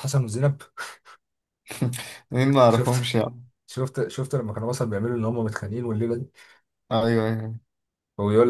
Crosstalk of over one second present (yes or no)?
no